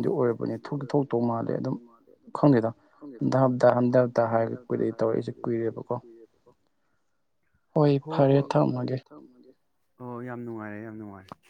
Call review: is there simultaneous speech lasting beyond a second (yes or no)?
yes